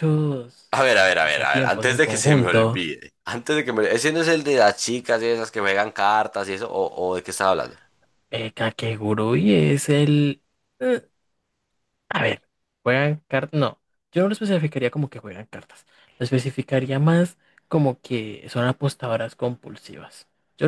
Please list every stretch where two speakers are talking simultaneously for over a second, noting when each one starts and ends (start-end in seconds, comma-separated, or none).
0.7-2.8